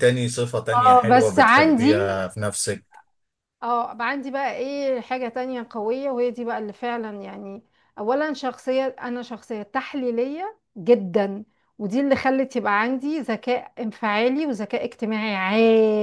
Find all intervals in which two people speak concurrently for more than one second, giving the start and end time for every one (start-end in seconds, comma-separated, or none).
0.7-2.2